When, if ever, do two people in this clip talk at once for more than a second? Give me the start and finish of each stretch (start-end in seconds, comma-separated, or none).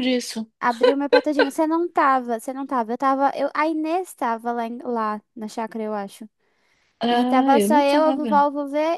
7.1-8.4